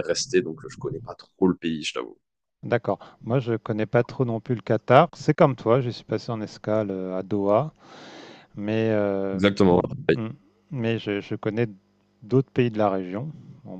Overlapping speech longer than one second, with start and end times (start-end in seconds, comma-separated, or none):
none